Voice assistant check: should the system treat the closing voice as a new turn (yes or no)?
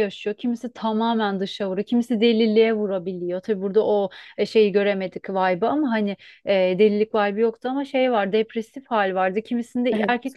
no